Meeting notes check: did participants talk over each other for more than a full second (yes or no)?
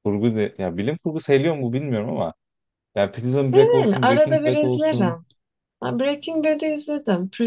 yes